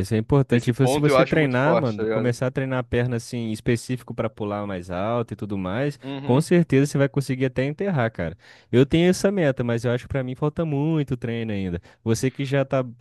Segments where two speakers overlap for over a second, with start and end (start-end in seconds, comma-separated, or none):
0.5-2.4